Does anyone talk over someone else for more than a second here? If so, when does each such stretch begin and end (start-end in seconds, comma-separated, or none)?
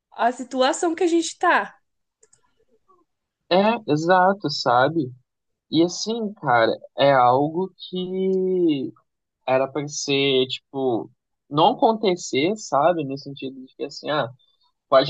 none